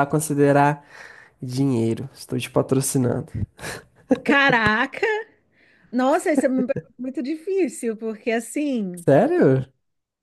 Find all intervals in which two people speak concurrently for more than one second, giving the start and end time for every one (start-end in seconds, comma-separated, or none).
none